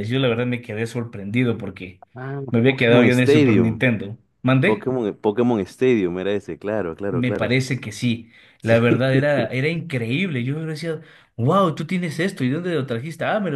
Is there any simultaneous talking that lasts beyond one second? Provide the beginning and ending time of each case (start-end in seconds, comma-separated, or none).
2.5-3.8